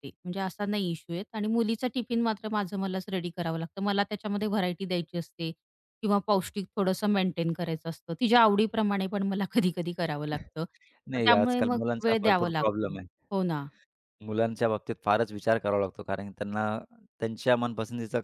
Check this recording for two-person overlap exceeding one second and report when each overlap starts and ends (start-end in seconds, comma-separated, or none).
11.1-13.0